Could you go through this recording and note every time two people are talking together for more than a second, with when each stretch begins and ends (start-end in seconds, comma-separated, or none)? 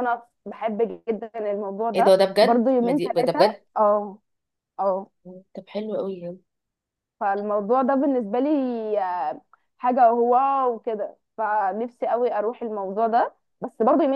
1.9-3.6